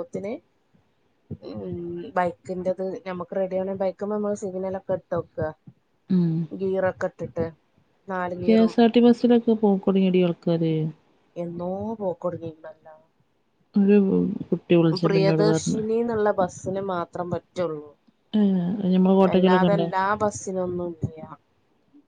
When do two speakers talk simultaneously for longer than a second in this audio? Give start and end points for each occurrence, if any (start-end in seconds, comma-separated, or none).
none